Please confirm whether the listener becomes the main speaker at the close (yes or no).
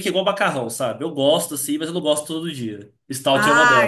yes